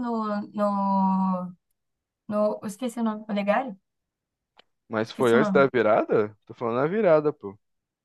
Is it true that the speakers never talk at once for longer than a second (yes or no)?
yes